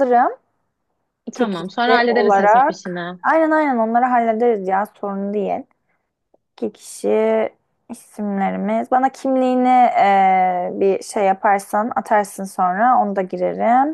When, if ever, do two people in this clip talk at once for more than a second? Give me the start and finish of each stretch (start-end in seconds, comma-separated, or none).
1.4-3.2